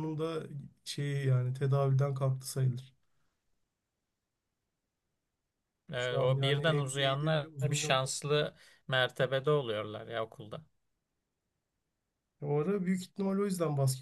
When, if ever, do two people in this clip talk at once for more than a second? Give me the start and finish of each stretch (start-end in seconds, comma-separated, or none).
6.0-8.0